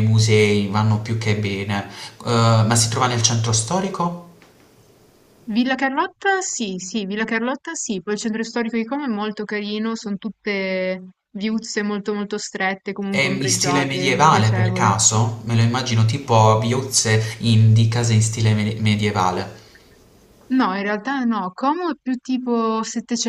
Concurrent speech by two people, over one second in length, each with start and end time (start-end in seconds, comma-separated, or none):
13.1-15.0